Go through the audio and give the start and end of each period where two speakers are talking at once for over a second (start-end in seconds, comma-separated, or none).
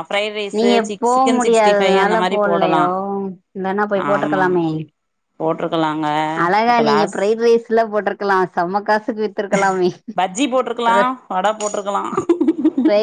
0.6-2.8